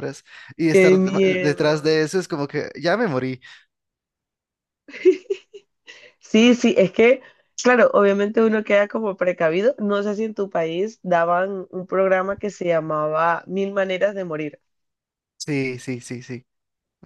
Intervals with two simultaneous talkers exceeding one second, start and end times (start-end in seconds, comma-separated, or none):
0.7-2.0